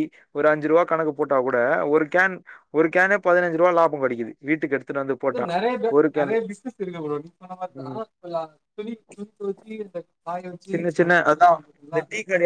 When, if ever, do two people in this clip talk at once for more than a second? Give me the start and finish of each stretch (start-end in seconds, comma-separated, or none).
none